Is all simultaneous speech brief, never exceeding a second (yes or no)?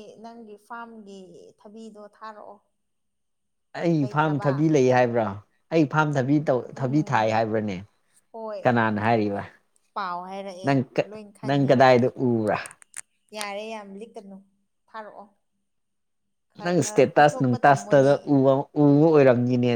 no